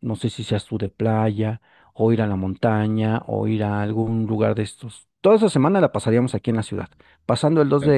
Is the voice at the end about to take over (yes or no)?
no